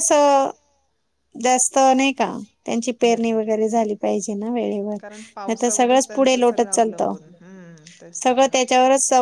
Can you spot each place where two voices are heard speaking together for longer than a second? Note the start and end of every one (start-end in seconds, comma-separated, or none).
5.0-7.1